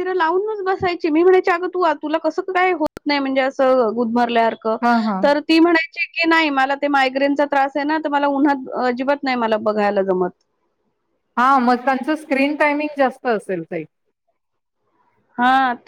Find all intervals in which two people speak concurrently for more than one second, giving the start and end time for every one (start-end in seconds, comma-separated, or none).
none